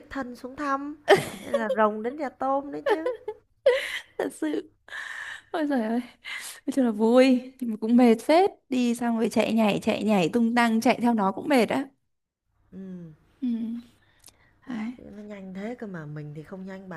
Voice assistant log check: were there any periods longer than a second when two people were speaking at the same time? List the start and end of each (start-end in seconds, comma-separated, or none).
none